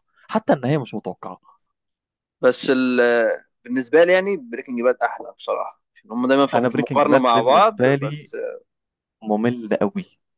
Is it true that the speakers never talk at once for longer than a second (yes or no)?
no